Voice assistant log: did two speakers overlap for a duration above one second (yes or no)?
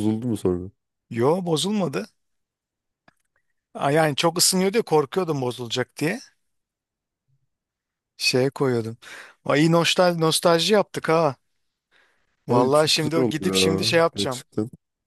yes